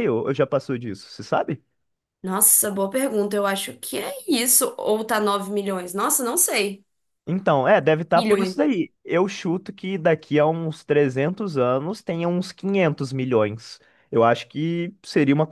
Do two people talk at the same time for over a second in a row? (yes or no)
no